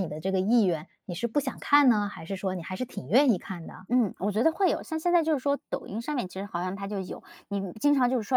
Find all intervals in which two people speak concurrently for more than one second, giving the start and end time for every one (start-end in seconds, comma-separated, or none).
none